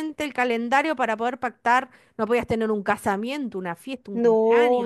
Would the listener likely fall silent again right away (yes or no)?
no